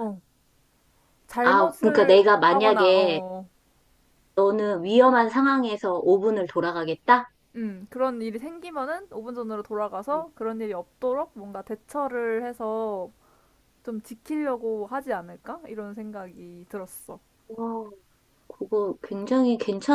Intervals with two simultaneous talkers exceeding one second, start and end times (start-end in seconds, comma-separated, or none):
1.4-3.0